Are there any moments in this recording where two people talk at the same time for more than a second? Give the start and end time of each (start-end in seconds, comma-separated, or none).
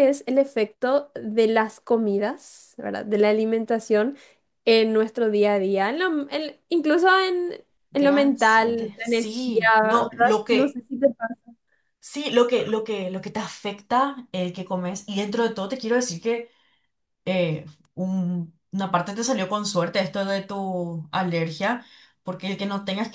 7.9-10.8